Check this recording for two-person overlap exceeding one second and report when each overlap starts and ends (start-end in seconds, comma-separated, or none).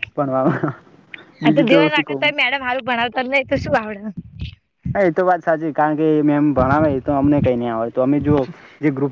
none